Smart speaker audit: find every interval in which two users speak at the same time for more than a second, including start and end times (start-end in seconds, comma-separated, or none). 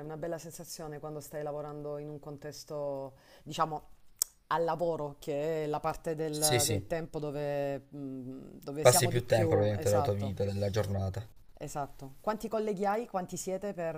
8.8-10.4